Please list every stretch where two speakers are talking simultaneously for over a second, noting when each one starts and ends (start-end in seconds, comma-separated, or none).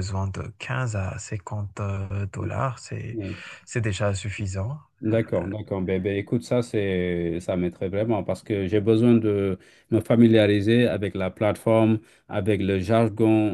none